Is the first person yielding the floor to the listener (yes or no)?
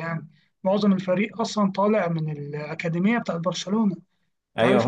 yes